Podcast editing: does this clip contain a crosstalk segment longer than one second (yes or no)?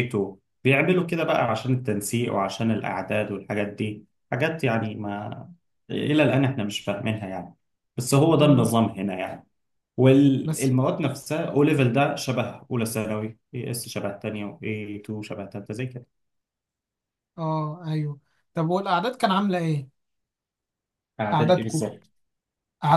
no